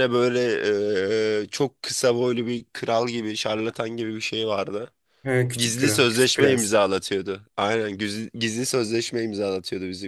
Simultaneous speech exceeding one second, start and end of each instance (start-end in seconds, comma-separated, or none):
5.5-6.8